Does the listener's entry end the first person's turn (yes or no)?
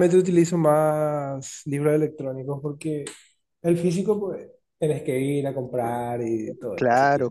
yes